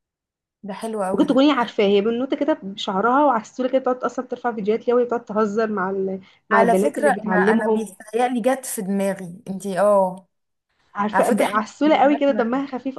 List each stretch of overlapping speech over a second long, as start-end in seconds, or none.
6.5-7.9, 11.1-12.4